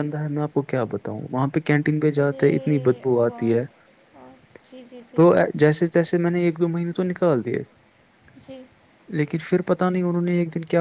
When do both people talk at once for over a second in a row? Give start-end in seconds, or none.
2.2-3.6